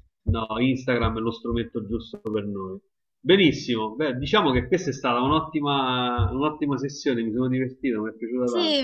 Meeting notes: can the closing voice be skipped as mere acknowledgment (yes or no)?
no